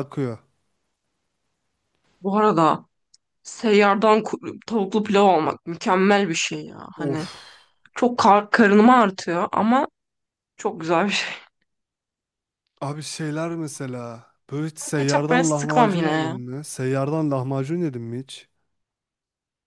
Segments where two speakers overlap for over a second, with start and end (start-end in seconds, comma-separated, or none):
14.9-16.4